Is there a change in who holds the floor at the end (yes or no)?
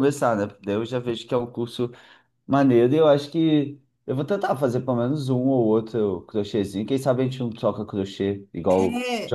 yes